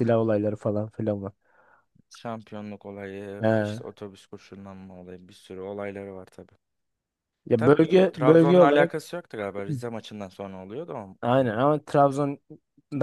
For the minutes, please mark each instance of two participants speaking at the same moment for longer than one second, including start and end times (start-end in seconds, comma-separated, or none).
7.5-8.9